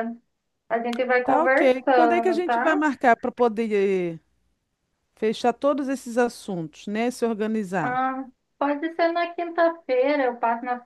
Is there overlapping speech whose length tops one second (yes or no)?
yes